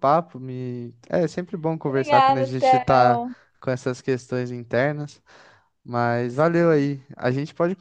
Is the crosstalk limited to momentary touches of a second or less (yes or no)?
no